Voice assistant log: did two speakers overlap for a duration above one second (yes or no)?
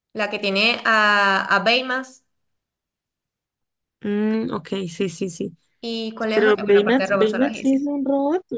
yes